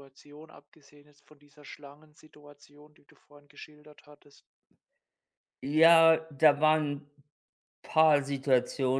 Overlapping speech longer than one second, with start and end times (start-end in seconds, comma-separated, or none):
none